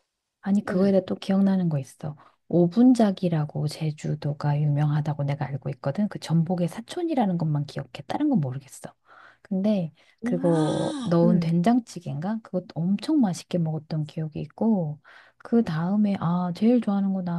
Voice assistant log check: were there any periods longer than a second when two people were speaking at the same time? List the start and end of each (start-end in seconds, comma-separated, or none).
10.2-11.5